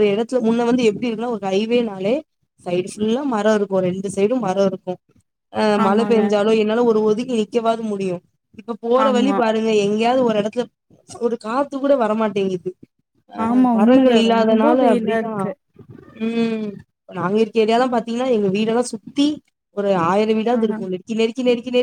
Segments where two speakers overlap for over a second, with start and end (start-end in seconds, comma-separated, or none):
13.5-15.4